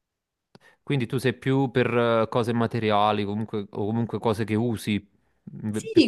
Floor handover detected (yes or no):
yes